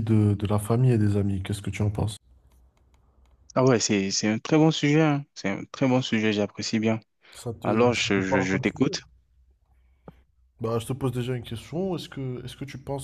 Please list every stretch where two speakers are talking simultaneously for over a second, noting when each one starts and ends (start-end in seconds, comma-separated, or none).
7.6-8.9